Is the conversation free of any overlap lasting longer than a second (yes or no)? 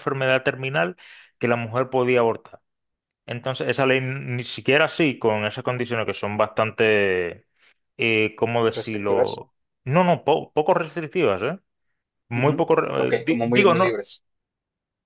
no